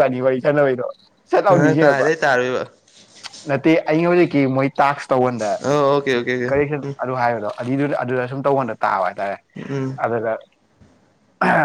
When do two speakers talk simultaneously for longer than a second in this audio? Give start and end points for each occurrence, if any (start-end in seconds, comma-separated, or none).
none